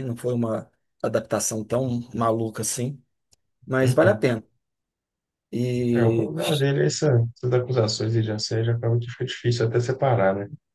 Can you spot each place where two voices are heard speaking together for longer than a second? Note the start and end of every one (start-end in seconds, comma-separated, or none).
none